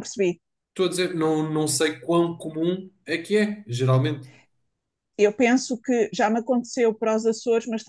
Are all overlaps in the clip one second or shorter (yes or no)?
yes